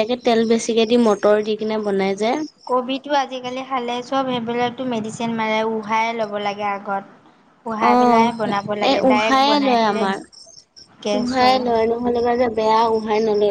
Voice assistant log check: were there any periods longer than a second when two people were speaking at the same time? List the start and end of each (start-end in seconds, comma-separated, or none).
7.9-10.0